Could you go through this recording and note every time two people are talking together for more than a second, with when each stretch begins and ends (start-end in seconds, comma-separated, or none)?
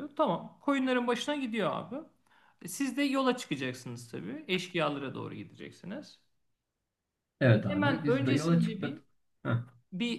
7.7-9.0